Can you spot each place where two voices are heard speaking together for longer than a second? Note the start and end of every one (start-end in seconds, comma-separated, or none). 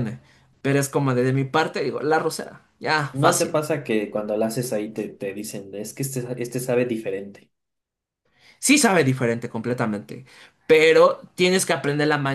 none